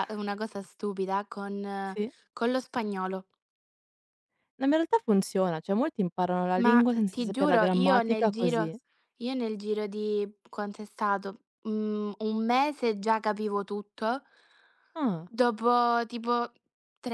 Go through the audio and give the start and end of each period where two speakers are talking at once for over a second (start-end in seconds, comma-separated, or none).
6.6-8.7